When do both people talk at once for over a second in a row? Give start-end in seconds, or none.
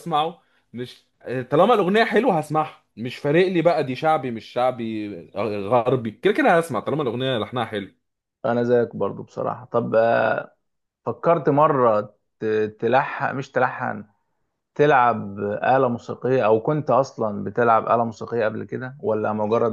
none